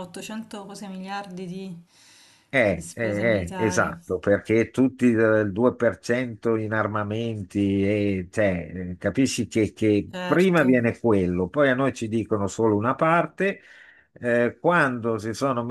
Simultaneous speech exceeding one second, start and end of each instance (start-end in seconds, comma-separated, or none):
2.7-3.9